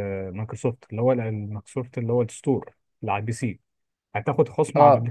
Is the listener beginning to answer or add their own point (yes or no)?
no